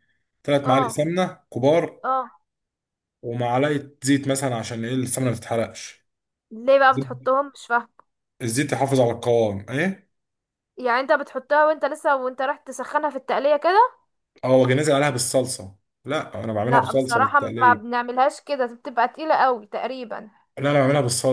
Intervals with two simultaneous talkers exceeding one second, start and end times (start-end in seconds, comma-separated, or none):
16.6-17.9